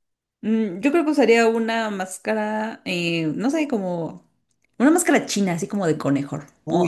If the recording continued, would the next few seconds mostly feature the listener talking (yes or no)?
yes